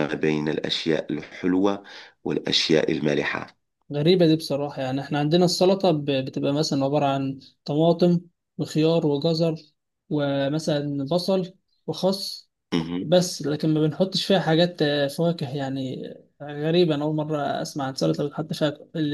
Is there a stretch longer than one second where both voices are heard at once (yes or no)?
no